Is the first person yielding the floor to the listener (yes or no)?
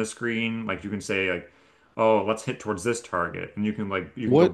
yes